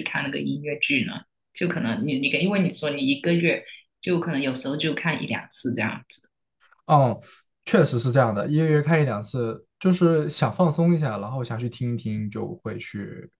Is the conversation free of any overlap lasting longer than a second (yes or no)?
yes